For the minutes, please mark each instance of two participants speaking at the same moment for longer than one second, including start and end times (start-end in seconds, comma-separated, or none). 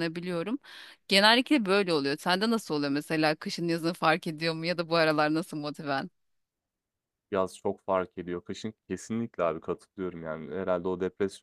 none